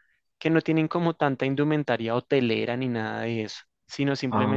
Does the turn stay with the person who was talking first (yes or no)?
yes